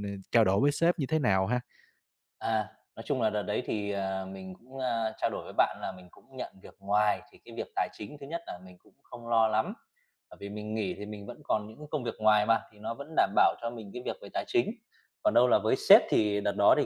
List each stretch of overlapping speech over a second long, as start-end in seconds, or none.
none